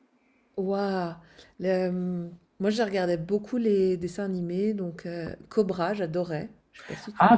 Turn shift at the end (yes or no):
yes